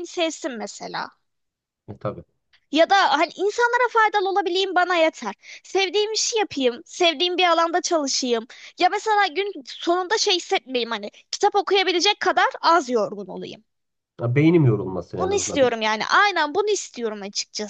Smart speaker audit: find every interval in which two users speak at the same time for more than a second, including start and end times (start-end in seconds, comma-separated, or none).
none